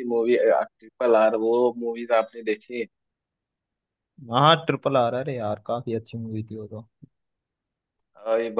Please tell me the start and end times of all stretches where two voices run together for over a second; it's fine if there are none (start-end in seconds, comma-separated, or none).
none